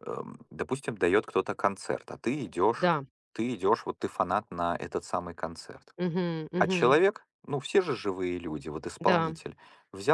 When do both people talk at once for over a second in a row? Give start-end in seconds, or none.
none